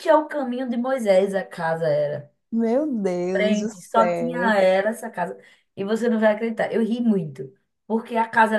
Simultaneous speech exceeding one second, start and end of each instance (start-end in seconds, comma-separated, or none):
3.3-4.5